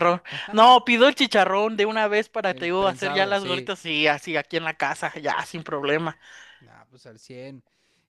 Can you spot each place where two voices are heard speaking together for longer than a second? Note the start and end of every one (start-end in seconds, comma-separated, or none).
2.5-3.7